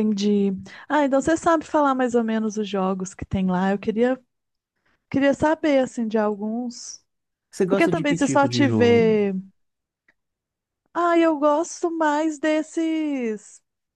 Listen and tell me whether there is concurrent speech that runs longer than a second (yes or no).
yes